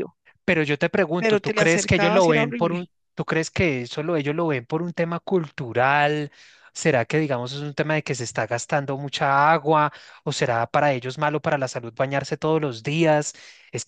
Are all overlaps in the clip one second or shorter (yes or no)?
no